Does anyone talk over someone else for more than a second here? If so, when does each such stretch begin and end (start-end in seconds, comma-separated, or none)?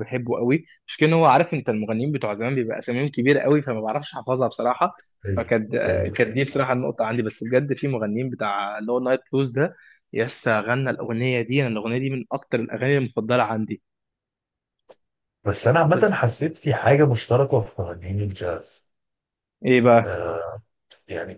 5.3-6.7